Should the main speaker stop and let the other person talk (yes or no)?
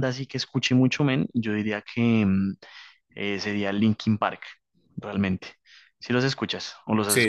yes